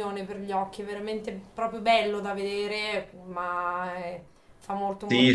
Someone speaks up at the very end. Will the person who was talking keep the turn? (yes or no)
no